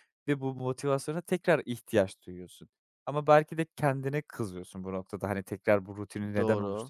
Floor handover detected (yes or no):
no